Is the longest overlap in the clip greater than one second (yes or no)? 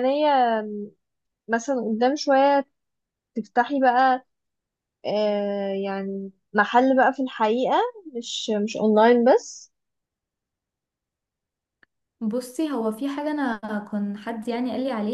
no